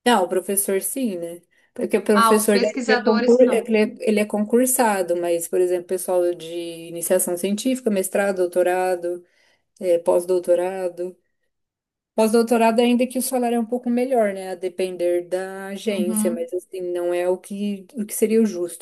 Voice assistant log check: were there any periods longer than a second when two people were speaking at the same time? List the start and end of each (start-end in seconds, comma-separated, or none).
2.1-3.6